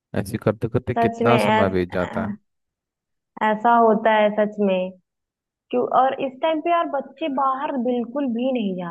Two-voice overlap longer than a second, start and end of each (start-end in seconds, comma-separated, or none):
1.0-2.3